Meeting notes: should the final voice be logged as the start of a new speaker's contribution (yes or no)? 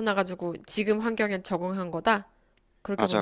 yes